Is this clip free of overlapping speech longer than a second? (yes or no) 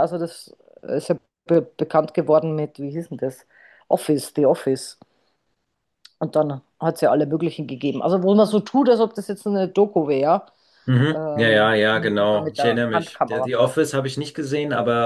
no